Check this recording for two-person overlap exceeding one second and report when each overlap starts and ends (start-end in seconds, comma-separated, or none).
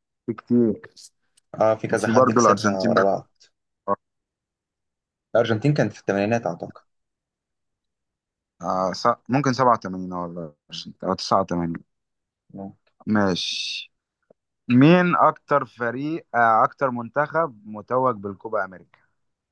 1.9-3.2